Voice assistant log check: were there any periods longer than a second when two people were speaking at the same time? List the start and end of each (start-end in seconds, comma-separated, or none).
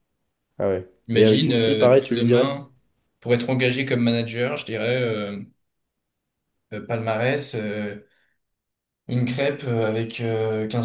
1.1-2.5